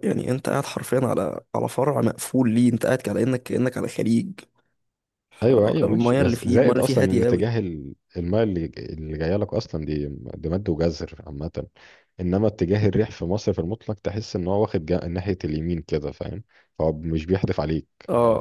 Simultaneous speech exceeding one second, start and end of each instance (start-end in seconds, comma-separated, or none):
5.4-7.5